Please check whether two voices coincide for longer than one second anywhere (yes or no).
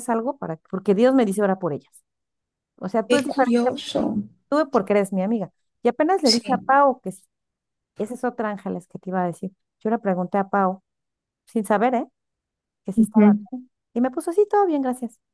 no